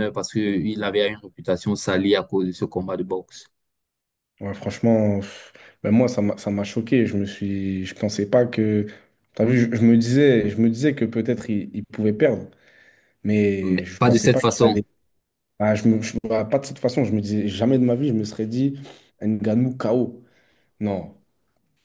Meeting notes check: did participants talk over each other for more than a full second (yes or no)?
yes